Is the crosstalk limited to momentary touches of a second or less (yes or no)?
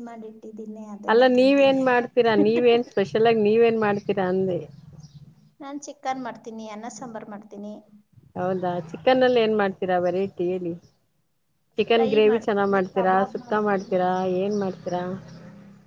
no